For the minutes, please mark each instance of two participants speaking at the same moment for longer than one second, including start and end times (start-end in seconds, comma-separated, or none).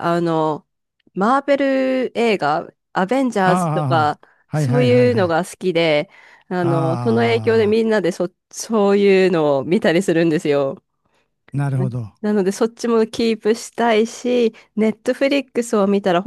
3.4-5.4, 6.6-8.0